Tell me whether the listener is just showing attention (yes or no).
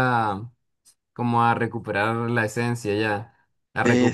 yes